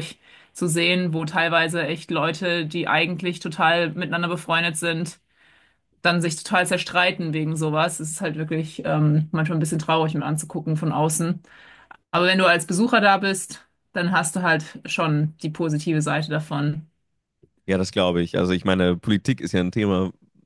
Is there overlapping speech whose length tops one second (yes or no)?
no